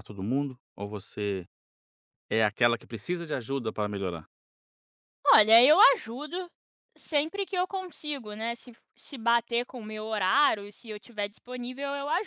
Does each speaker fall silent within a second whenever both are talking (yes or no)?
yes